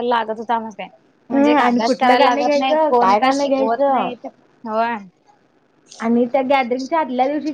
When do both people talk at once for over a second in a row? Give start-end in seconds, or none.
1.3-4.1